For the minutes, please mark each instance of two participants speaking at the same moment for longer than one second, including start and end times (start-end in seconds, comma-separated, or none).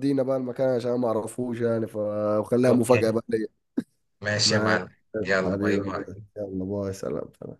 none